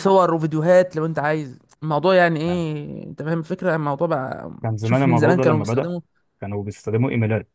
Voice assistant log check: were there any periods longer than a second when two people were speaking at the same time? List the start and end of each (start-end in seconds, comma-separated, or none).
4.6-5.9